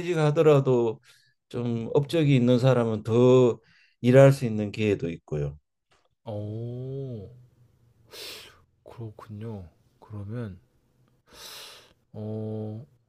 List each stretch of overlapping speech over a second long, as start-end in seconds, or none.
none